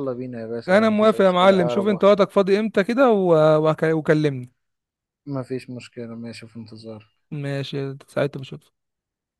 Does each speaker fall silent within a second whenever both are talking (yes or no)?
no